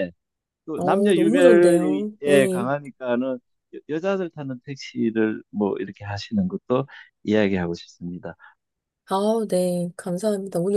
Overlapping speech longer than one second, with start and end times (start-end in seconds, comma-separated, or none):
0.8-2.7